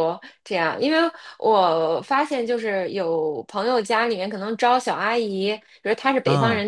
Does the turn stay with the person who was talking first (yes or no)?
yes